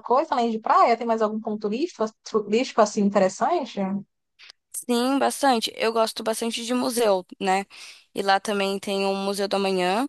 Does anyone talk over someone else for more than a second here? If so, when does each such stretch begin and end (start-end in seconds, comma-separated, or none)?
none